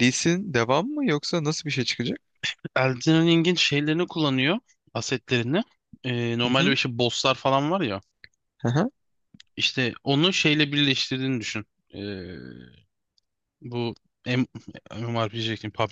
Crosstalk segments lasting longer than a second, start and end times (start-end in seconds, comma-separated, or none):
none